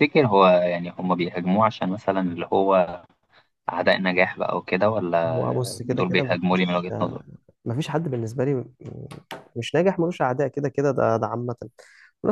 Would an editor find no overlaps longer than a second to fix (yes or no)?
no